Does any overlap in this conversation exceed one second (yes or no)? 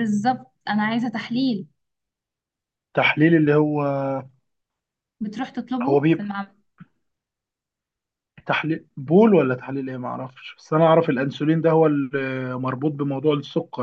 no